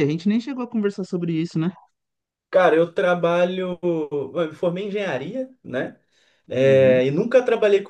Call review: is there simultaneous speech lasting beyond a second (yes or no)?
no